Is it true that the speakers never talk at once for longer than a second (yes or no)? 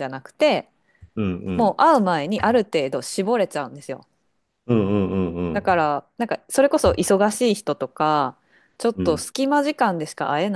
yes